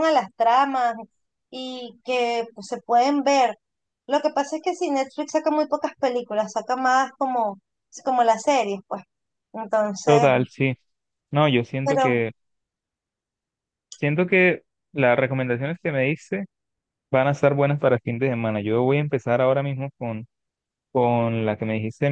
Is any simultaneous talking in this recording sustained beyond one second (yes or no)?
no